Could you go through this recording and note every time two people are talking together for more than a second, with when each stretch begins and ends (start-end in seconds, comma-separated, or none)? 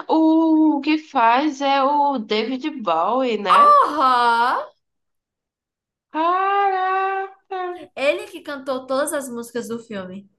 none